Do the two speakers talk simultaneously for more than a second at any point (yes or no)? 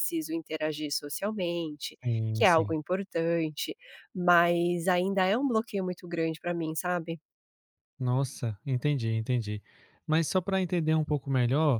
no